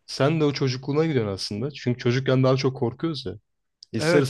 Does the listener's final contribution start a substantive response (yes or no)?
no